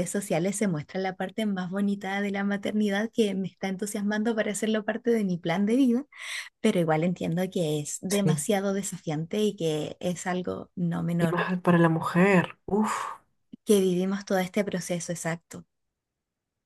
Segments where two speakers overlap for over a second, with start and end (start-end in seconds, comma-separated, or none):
none